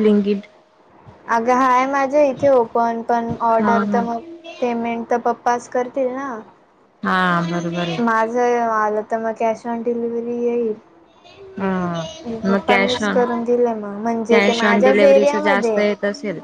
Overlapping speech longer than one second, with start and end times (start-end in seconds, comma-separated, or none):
14.3-15.8